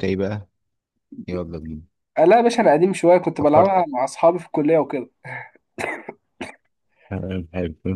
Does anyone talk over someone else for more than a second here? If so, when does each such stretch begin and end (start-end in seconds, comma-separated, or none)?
none